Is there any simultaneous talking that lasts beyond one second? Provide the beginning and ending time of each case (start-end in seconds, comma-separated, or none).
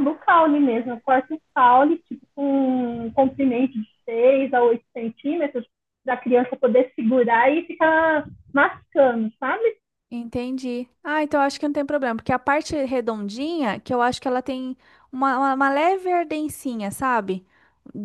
none